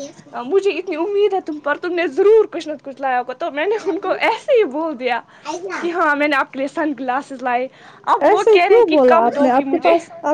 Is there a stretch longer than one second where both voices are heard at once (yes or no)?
no